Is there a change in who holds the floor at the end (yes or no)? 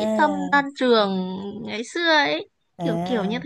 yes